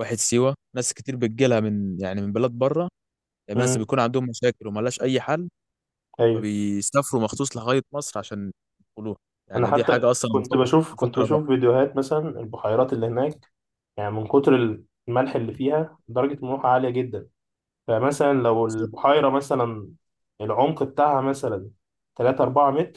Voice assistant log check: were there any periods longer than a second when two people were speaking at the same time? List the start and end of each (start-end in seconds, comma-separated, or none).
9.5-11.4